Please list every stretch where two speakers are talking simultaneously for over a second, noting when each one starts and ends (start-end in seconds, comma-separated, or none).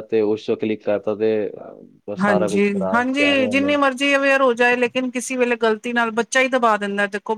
2.2-3.7